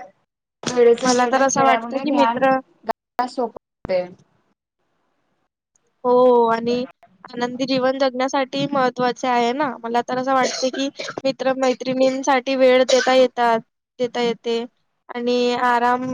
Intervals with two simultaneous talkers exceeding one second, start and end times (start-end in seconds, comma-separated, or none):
1.1-2.6